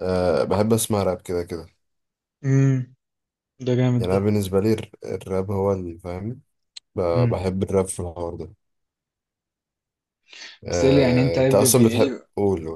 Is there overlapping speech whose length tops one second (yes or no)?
yes